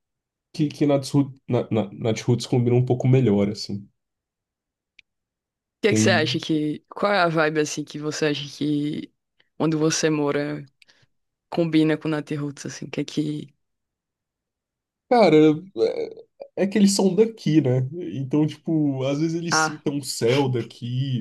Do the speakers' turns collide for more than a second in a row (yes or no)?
no